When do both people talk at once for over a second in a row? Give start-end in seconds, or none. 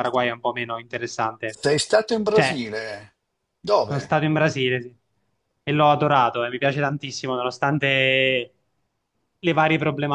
none